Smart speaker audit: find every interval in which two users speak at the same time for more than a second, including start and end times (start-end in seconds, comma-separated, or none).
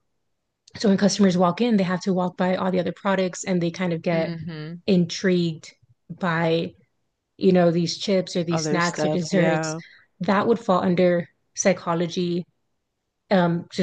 8.5-9.7